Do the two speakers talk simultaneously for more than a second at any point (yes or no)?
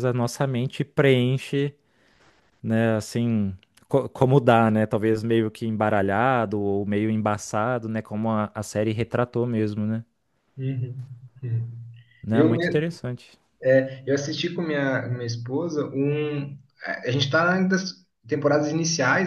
no